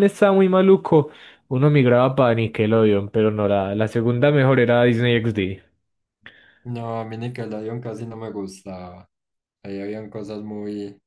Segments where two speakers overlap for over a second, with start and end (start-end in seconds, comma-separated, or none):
none